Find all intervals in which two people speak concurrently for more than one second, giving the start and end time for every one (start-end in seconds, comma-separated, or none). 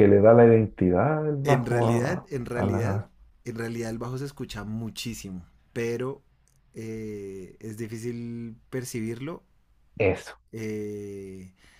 1.4-3.0